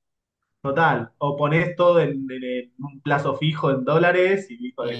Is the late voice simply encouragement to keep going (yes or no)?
no